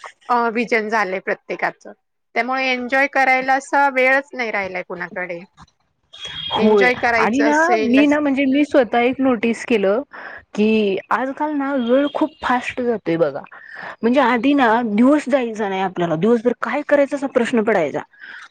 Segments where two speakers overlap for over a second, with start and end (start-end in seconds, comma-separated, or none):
none